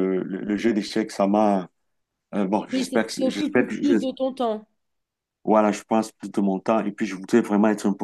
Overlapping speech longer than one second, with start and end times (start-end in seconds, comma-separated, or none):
2.7-4.0